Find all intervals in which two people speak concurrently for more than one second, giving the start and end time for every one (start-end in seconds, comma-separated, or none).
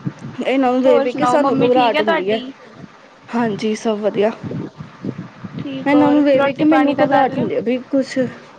0.8-2.4, 5.9-7.5